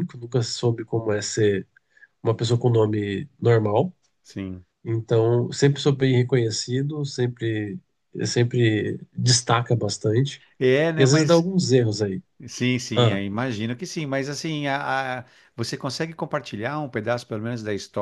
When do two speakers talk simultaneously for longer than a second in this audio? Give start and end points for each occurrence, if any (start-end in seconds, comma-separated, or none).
none